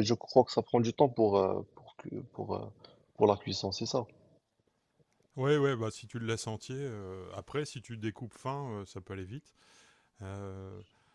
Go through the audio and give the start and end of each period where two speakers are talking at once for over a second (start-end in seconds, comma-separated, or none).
none